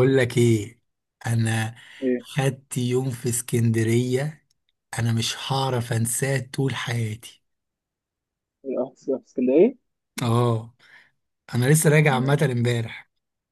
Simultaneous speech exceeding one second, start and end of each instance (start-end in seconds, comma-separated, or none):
none